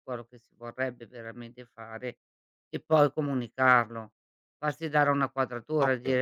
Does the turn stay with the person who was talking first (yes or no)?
yes